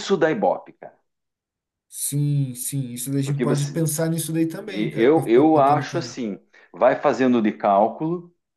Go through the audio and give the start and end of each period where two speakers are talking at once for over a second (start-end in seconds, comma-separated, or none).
4.7-6.1